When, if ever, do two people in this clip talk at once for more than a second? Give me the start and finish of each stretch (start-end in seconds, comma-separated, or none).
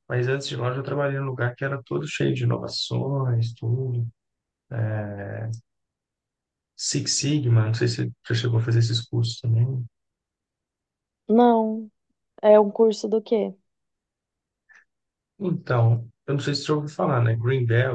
none